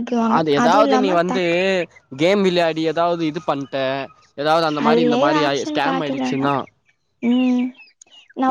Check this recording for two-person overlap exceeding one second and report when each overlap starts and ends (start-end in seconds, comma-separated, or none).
4.8-6.5